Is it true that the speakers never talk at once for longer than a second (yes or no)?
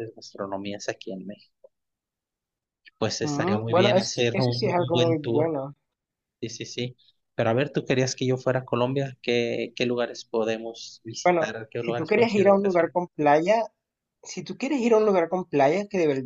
no